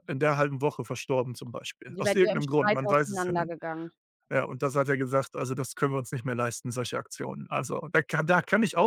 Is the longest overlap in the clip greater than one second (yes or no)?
yes